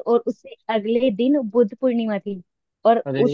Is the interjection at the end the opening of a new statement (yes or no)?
no